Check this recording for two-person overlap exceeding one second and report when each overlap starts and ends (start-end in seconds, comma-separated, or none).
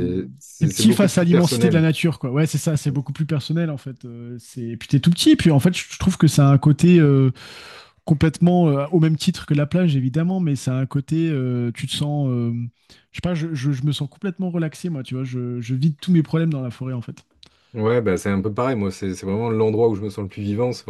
0.6-1.9